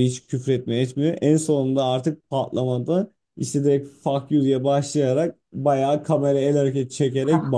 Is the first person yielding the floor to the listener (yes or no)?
no